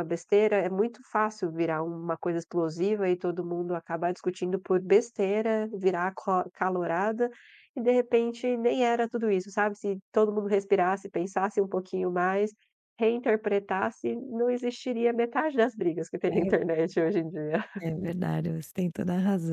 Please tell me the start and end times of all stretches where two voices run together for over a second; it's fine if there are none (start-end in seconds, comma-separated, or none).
none